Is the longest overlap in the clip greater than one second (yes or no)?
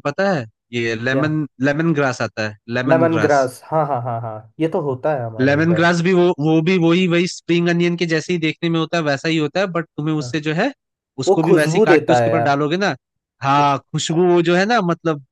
yes